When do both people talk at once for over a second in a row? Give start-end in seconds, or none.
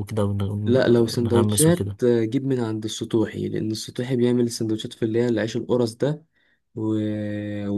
0.6-2.0